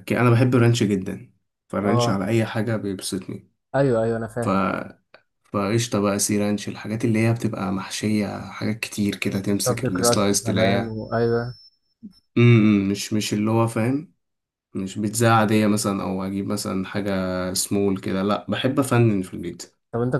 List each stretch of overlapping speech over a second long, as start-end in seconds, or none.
9.7-11.0